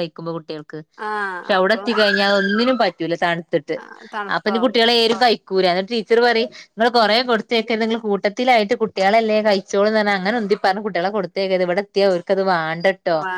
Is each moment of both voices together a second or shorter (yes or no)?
yes